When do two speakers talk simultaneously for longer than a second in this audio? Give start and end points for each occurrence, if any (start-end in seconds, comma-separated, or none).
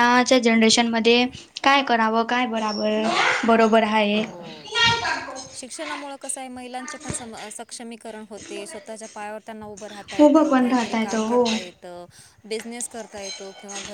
10.2-11.5